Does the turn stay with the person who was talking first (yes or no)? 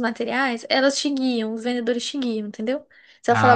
yes